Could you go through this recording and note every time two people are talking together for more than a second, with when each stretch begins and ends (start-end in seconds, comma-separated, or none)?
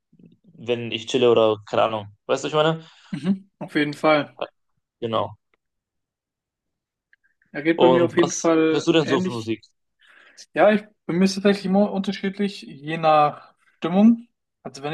7.8-9.5